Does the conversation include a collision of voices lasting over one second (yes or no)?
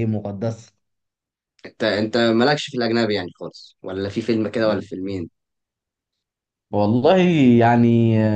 no